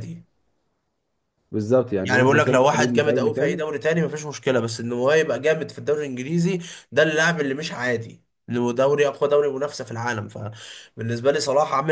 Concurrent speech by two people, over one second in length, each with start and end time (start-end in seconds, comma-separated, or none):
2.0-3.6